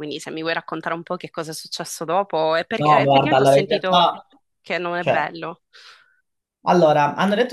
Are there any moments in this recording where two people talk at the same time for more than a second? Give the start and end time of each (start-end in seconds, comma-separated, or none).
2.8-4.1